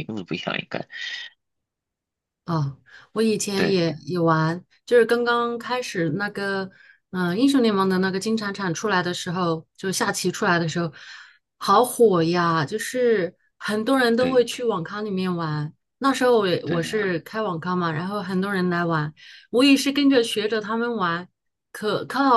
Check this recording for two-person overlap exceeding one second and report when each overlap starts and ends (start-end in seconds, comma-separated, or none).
none